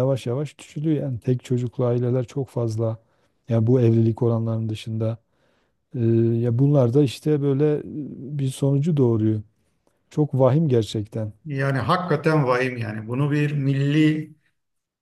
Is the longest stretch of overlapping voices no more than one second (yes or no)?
yes